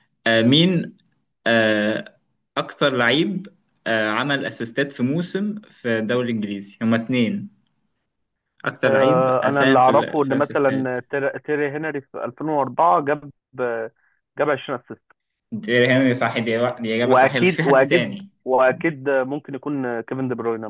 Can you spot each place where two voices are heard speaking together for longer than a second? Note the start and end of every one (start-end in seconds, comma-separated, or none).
8.8-11.0, 17.0-18.3